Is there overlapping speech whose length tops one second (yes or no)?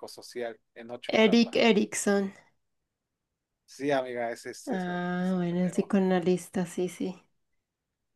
yes